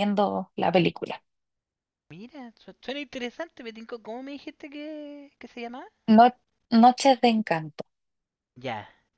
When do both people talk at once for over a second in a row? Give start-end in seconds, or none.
none